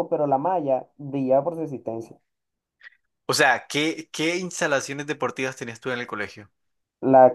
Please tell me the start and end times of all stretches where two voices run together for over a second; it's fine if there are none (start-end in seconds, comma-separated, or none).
none